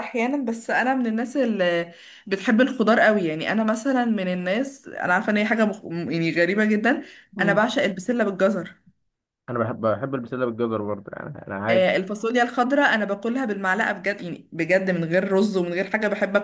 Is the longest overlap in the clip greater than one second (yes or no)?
no